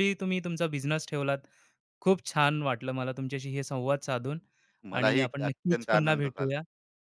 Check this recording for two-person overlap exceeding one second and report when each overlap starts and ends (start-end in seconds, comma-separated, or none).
4.9-6.5